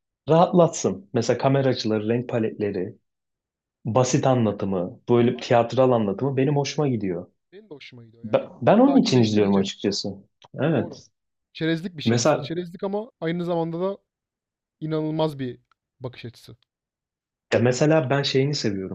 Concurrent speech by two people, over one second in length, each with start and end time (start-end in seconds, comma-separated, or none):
8.2-9.7